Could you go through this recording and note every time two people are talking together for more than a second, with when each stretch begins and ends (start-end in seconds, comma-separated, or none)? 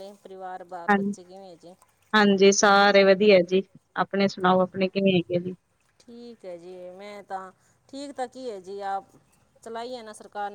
none